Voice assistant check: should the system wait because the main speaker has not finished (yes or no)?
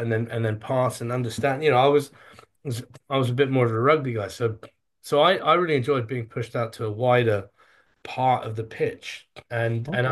no